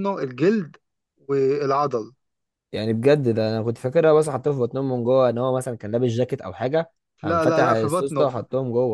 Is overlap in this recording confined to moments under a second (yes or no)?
no